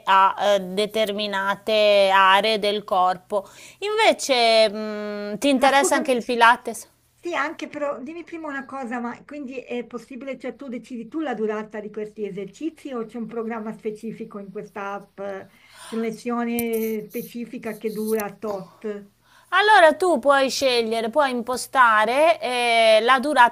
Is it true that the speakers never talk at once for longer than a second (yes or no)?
yes